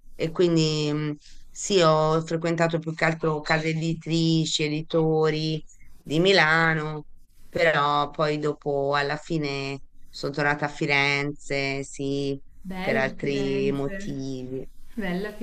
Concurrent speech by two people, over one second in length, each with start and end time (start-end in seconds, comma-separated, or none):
12.8-14.1